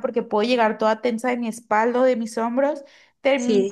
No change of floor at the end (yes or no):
yes